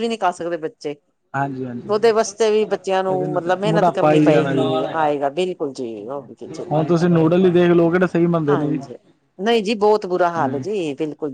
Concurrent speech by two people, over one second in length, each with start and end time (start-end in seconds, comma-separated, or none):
3.1-5.3